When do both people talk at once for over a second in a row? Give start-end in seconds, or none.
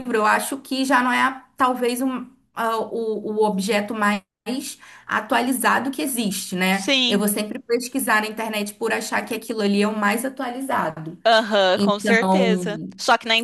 11.7-12.9